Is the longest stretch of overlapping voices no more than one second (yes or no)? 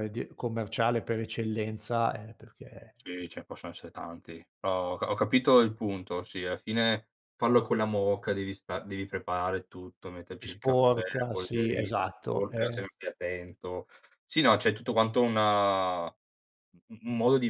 no